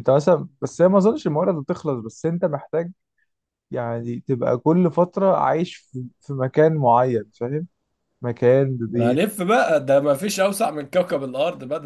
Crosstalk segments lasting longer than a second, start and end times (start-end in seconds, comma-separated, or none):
none